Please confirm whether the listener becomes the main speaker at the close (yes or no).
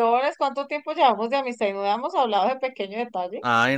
yes